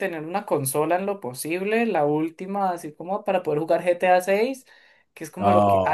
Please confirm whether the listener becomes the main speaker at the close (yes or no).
no